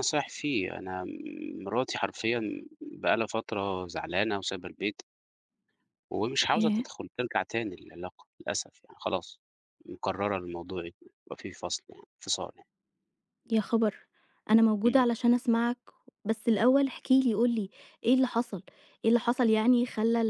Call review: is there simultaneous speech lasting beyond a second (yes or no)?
no